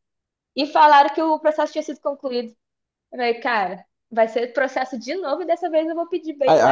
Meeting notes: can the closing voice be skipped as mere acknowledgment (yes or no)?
no